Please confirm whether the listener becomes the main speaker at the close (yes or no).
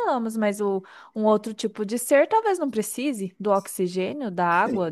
yes